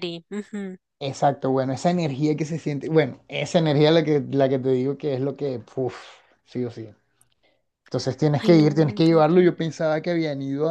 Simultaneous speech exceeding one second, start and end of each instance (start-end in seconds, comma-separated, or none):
8.4-9.6